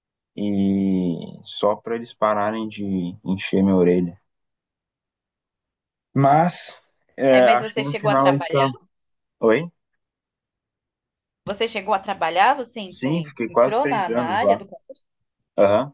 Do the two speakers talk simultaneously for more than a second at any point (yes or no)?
yes